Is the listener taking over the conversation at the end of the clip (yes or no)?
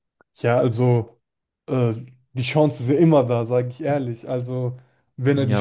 yes